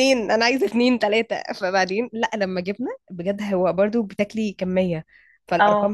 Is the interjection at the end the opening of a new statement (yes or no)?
no